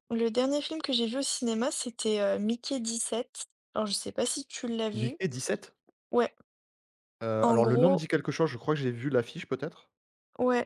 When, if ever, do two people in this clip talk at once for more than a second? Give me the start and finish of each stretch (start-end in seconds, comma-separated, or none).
none